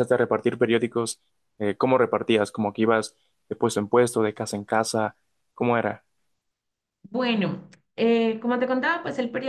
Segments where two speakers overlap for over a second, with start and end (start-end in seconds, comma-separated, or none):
none